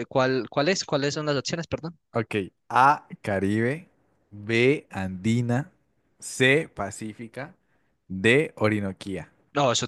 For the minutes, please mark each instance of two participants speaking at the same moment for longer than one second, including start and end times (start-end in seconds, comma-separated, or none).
none